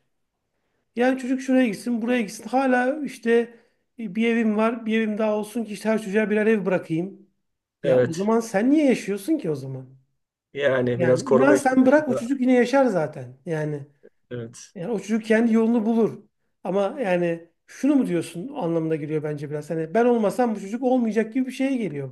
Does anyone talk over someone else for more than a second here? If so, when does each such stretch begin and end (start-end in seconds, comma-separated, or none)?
10.9-12.3